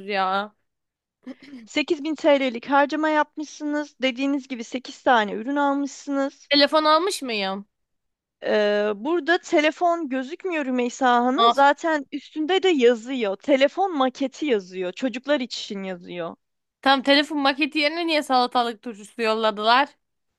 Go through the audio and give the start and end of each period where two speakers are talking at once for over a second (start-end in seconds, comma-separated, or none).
none